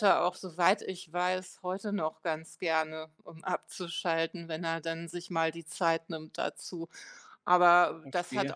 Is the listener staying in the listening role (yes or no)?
yes